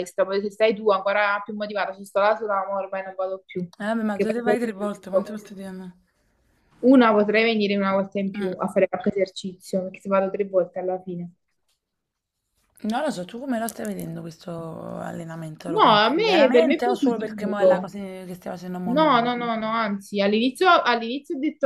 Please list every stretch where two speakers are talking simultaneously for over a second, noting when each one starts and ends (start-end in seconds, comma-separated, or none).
15.7-17.9